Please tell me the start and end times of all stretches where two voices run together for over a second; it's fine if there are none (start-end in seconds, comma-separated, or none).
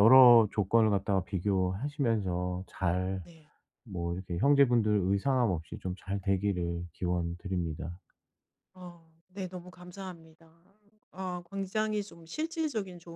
none